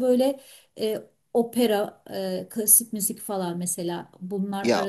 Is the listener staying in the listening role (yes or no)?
yes